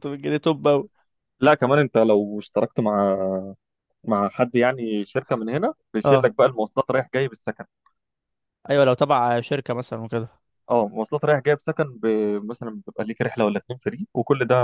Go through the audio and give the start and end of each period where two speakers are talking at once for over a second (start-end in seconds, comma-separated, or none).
none